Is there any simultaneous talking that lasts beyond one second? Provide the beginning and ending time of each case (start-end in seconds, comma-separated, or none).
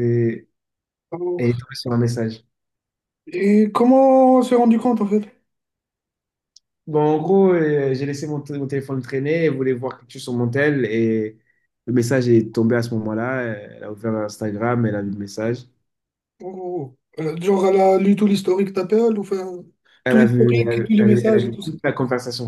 20.1-21.7